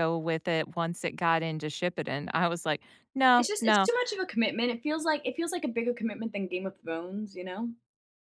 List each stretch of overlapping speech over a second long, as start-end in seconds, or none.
none